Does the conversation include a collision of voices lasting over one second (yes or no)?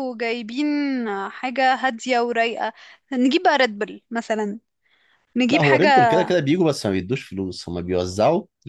no